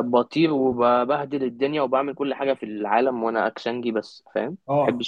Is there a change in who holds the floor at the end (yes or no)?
yes